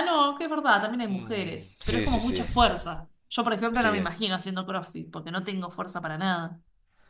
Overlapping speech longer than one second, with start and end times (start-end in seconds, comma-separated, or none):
1.1-2.5